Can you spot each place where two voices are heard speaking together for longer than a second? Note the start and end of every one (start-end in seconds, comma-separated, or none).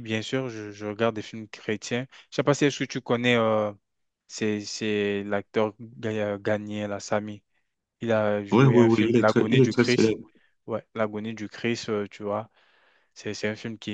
8.5-10.2